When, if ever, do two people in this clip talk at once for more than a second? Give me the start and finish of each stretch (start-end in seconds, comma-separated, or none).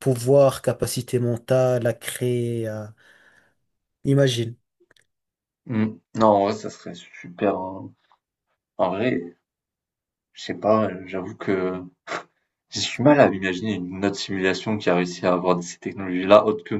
none